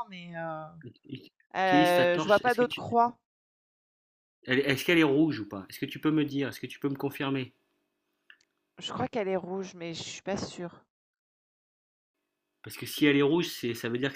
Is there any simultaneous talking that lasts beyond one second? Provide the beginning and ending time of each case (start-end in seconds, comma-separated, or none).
1.6-2.8